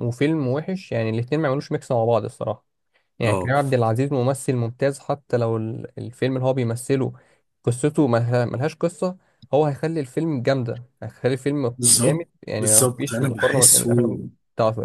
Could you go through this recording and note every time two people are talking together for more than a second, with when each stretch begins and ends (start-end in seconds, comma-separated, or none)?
11.8-14.2